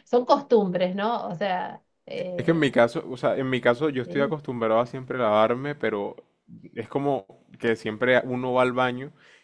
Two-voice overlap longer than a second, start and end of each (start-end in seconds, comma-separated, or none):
none